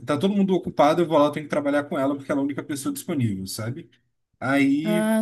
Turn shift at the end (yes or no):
no